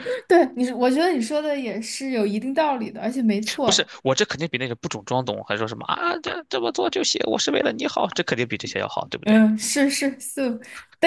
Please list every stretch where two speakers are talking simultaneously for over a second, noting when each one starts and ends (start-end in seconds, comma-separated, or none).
none